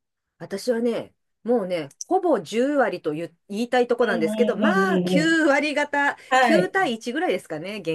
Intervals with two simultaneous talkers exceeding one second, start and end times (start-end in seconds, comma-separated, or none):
4.1-5.4